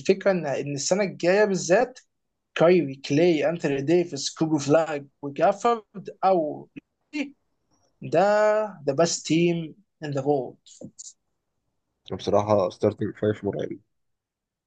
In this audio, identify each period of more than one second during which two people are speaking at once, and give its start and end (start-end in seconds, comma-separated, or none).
none